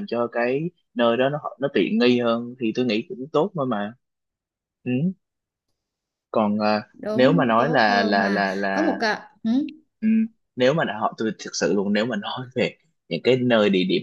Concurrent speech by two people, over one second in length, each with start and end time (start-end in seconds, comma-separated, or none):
6.9-9.0